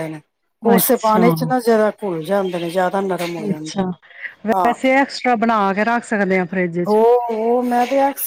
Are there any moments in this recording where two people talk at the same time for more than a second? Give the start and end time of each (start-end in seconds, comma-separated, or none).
none